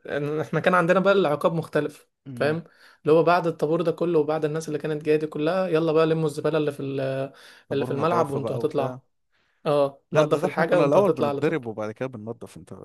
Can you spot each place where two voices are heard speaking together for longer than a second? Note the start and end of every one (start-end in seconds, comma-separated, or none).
7.7-8.9, 10.1-11.6